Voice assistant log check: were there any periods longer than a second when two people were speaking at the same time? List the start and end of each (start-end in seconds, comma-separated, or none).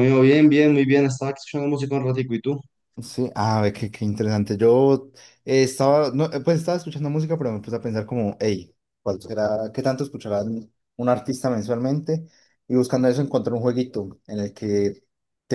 none